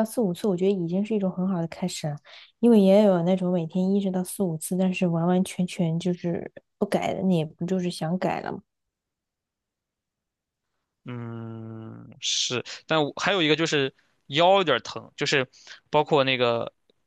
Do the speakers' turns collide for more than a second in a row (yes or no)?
no